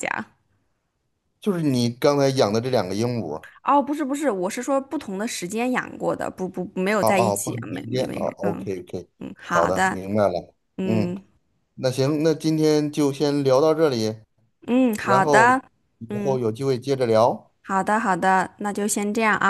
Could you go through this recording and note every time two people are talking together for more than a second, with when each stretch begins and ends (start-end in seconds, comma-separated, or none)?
7.0-8.7